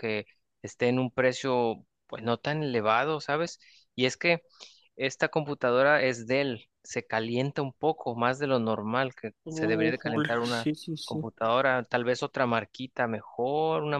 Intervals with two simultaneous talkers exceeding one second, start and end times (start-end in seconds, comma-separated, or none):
9.4-11.2